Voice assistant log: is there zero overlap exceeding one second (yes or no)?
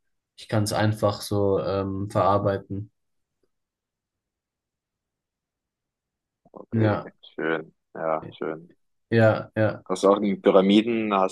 yes